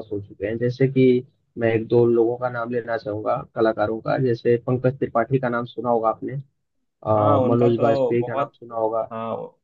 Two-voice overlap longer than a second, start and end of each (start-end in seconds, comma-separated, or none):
7.2-8.5